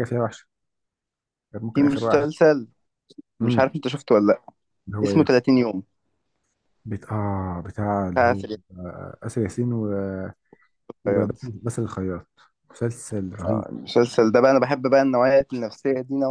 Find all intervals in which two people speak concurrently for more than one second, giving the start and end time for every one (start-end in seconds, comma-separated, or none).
none